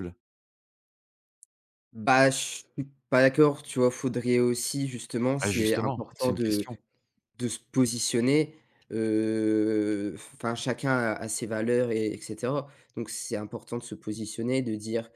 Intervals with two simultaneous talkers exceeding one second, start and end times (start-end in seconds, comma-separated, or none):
5.4-6.7